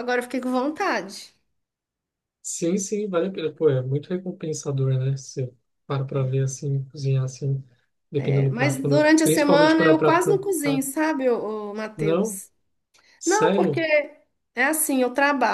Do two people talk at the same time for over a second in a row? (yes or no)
yes